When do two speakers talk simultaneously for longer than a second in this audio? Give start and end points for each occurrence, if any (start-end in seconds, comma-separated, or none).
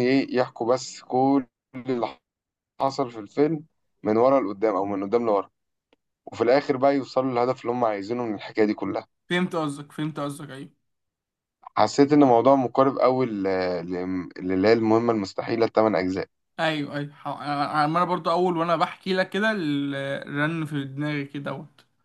none